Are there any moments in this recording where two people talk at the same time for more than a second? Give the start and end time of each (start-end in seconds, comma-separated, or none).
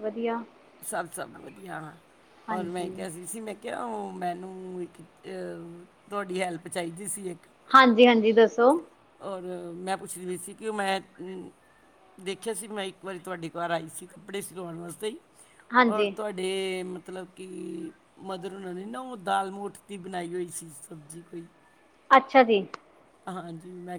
none